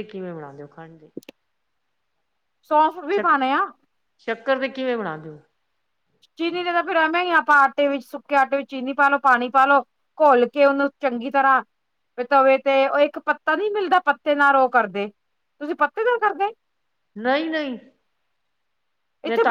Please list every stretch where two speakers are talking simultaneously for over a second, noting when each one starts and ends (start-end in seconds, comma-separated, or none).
none